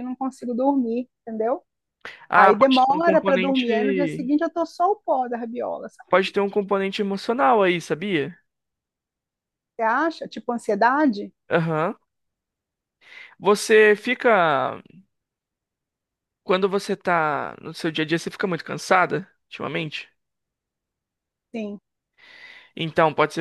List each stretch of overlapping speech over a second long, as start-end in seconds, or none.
2.3-4.2